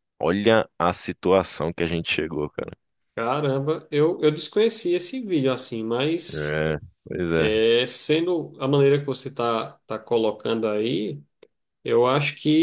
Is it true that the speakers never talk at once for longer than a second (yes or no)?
yes